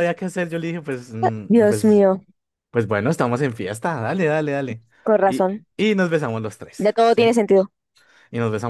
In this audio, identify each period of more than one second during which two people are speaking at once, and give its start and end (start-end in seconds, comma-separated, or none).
none